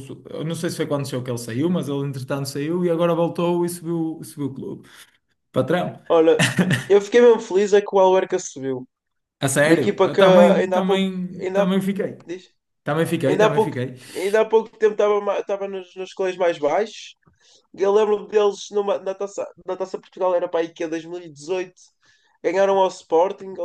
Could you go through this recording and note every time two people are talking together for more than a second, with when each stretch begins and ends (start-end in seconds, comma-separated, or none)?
9.6-11.8